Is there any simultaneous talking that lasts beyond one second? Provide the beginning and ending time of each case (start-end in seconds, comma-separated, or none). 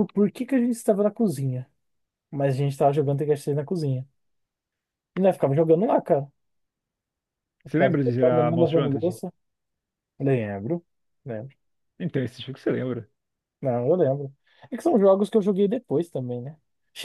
7.7-9.2